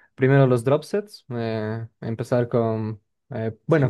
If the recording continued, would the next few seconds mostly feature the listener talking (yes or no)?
no